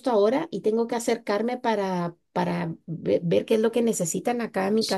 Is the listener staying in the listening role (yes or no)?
no